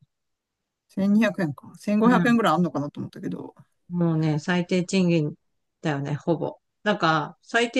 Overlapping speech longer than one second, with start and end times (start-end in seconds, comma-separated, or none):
none